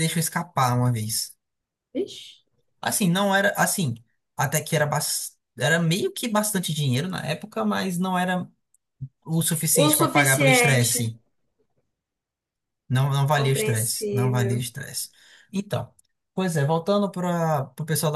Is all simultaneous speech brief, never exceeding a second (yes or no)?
no